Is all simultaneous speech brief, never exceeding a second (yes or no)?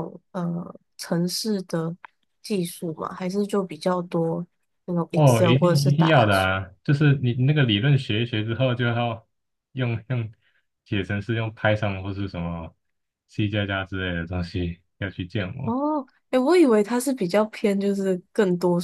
no